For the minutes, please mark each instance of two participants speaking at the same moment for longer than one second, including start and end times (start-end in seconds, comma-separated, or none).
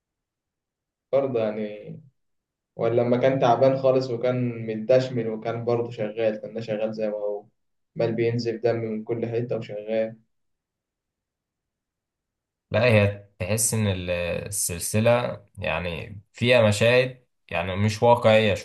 none